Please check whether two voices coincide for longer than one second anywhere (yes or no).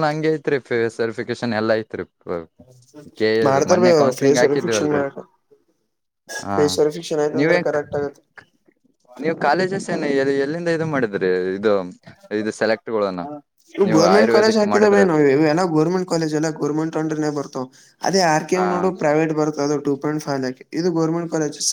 yes